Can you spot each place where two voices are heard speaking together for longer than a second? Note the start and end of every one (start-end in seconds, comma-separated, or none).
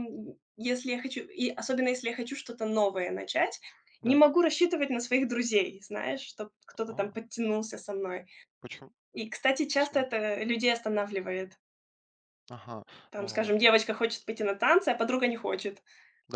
none